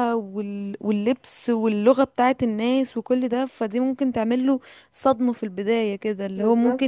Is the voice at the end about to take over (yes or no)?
no